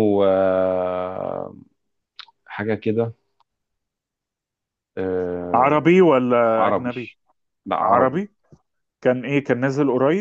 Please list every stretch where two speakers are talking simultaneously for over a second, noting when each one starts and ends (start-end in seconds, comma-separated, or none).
none